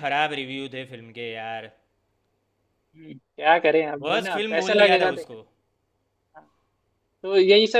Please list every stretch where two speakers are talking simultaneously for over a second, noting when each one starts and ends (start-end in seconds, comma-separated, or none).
4.0-5.4